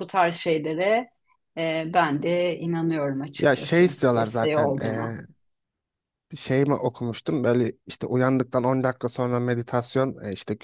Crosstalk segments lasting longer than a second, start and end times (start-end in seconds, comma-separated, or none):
3.4-5.1